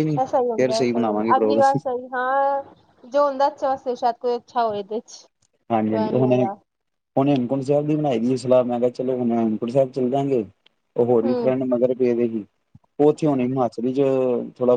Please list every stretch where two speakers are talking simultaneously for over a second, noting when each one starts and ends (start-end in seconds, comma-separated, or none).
0.6-1.8